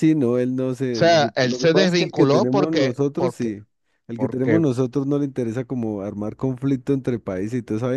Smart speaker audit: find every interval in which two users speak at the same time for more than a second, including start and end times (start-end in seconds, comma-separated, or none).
0.9-3.5